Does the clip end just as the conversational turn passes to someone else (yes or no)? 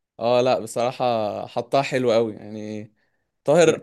no